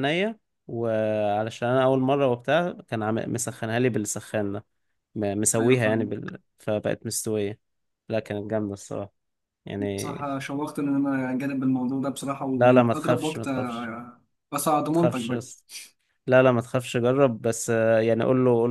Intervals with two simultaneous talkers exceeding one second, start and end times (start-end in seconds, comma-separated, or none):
12.6-13.9